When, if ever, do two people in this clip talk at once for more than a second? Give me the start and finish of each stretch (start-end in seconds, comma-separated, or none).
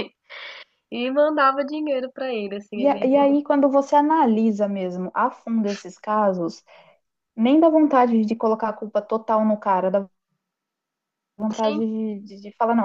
none